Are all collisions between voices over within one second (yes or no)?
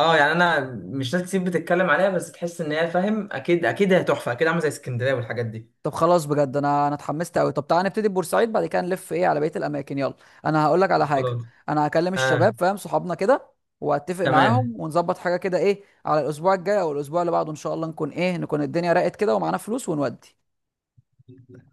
yes